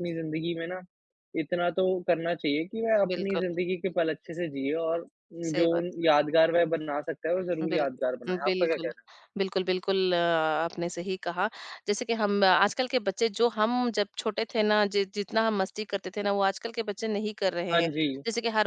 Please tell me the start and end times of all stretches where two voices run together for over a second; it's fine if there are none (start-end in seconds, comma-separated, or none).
7.6-8.9